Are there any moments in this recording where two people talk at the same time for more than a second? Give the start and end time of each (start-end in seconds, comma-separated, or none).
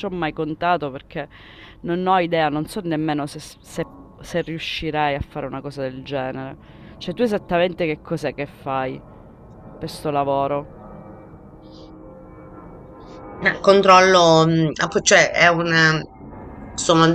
none